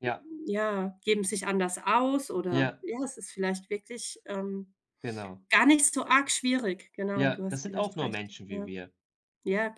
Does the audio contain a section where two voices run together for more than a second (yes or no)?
yes